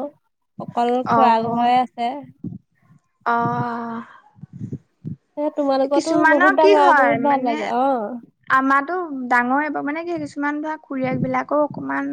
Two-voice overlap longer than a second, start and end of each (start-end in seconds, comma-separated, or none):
6.0-7.7